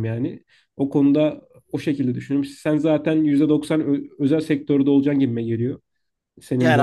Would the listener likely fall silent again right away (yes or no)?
no